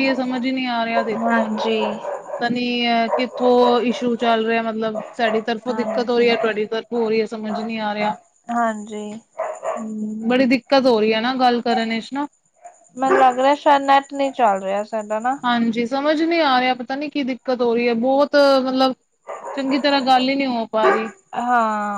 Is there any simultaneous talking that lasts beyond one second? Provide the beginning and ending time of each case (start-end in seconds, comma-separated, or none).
none